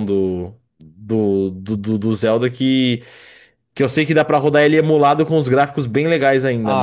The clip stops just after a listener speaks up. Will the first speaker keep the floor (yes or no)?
no